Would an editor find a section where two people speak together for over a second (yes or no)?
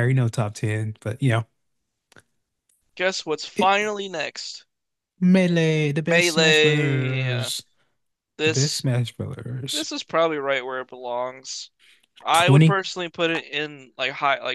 yes